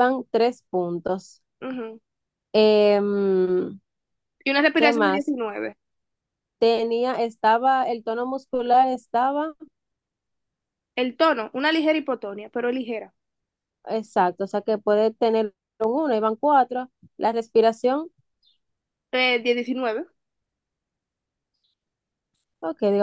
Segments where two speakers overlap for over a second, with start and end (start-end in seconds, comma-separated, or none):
none